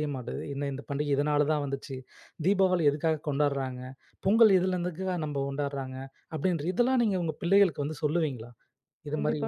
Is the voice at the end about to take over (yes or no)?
yes